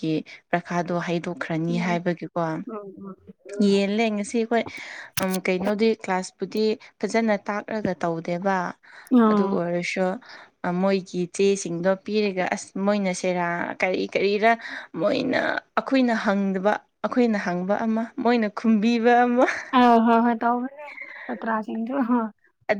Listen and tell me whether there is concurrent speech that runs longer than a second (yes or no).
no